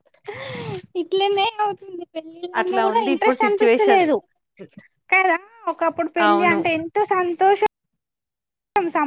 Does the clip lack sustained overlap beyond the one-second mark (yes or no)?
no